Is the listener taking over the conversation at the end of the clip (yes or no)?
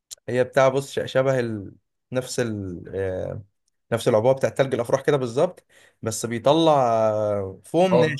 no